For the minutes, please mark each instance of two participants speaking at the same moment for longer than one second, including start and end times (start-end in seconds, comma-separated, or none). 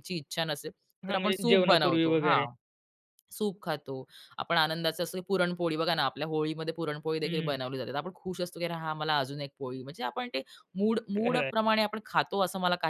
1.1-2.5